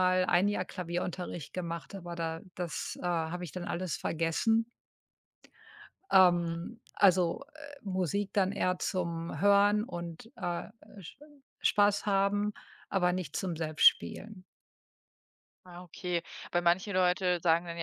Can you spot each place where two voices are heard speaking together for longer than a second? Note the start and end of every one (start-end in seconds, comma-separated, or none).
none